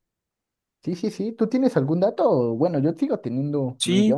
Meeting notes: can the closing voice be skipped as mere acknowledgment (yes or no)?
no